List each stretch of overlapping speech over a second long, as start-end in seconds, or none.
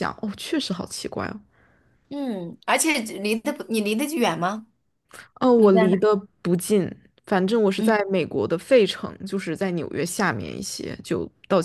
none